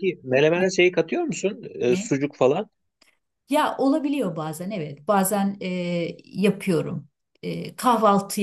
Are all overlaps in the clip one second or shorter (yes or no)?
yes